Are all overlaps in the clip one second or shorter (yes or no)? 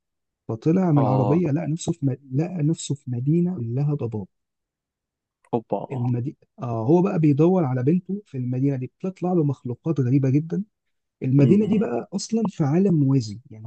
yes